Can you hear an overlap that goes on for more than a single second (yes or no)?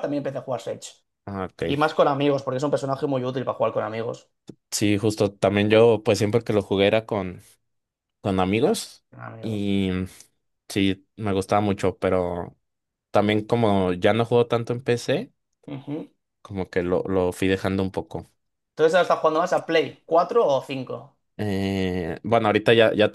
no